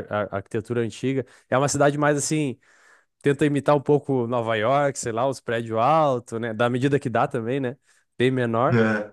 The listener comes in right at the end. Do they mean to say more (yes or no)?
no